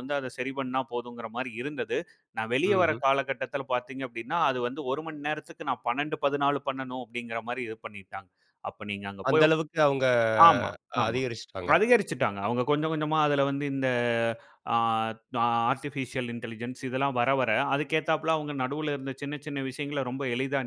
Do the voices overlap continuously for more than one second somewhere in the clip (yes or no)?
no